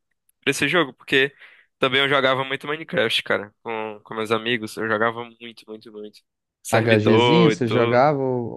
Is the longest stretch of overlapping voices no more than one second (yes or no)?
no